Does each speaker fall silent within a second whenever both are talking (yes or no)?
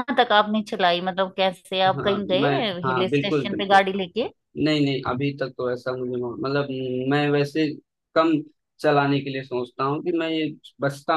no